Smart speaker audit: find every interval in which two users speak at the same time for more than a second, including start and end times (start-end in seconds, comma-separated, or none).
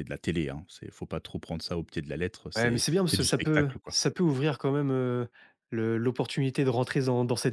2.5-4.0